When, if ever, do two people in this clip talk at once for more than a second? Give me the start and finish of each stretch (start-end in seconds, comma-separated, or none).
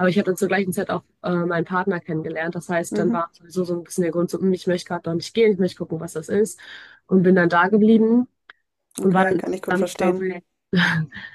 9.0-10.3